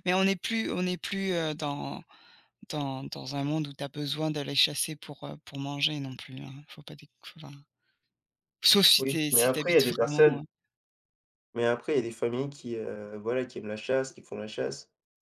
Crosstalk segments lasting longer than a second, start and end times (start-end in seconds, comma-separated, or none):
9.0-10.4